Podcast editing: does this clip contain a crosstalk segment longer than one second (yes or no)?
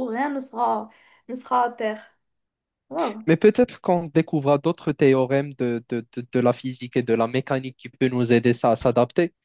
no